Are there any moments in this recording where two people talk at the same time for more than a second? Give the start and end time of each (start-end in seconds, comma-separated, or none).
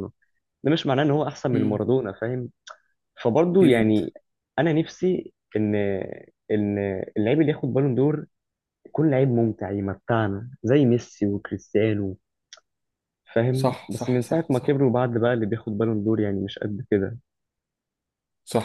13.5-14.8